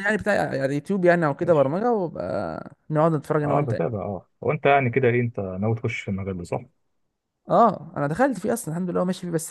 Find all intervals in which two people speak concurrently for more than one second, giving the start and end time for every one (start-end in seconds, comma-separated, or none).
none